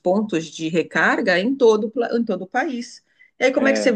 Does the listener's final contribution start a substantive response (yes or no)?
no